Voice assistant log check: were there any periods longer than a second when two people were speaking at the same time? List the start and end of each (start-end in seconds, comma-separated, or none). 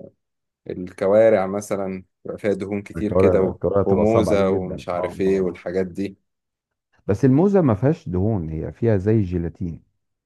3.0-5.6